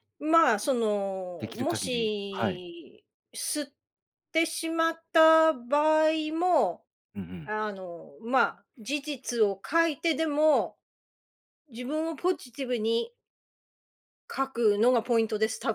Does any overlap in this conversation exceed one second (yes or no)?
yes